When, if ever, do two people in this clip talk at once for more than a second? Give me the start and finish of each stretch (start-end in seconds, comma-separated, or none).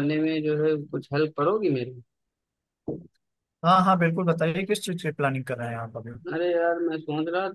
none